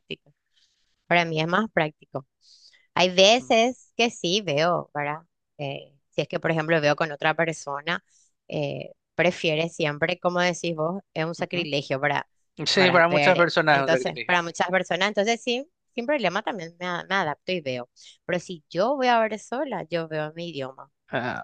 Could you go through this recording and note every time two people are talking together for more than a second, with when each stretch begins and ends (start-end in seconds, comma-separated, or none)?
12.7-14.4